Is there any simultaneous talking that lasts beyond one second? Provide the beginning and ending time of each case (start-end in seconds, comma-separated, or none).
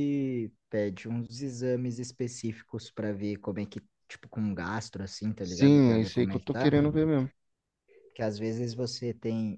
5.4-6.7